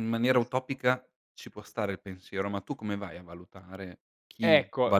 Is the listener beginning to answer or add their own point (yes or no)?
yes